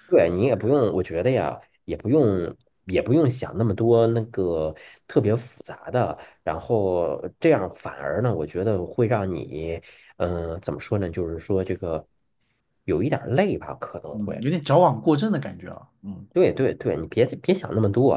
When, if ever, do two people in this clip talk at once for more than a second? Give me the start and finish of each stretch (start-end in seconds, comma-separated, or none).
none